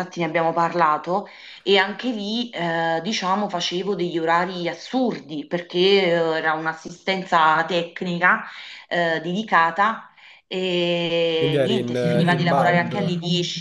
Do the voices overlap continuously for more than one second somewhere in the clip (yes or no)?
yes